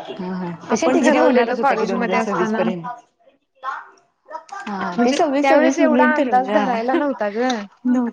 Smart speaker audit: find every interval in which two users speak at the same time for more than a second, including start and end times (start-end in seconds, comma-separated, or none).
0.7-2.6, 4.9-7.0